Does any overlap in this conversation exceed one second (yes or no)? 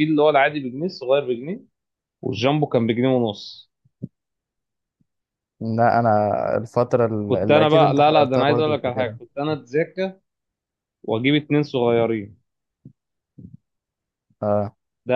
yes